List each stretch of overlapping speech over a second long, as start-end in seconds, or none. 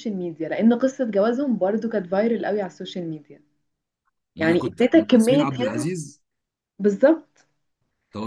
4.4-5.8